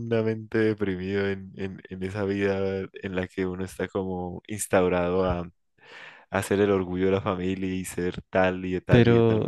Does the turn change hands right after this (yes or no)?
yes